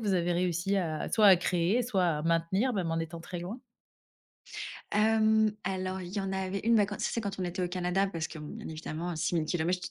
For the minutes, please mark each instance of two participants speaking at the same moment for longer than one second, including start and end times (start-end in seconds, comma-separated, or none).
none